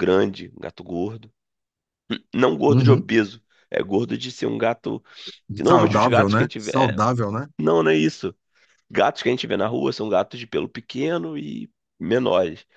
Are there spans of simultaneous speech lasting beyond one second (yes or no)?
yes